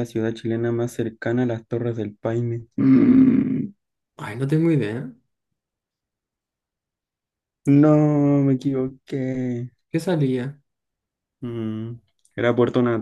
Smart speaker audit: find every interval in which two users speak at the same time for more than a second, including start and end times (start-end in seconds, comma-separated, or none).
none